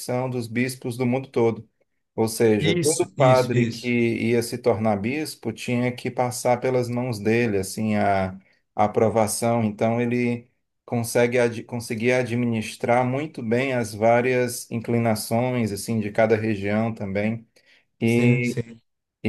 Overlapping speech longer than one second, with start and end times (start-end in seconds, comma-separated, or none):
2.6-4.0